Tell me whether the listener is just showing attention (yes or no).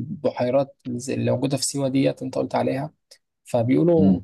yes